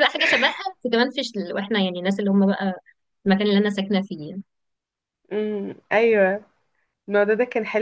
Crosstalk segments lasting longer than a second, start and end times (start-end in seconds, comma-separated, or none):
none